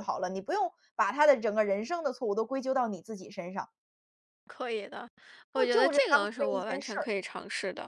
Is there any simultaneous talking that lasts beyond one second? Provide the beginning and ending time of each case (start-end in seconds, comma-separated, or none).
5.5-7.1